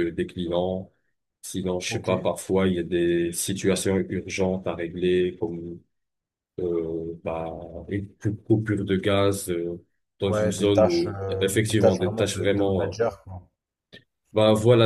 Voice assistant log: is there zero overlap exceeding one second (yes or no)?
no